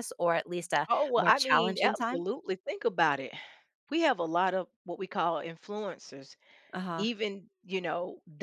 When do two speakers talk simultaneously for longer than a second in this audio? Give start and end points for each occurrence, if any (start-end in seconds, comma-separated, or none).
0.9-2.2